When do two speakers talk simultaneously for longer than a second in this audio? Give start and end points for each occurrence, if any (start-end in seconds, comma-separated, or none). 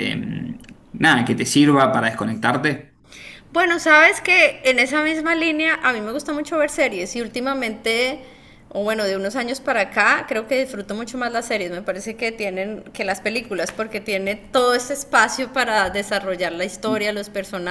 none